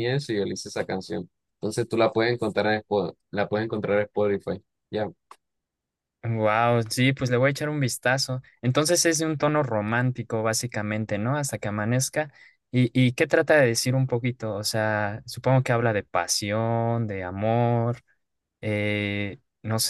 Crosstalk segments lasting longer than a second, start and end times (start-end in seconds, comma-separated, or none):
none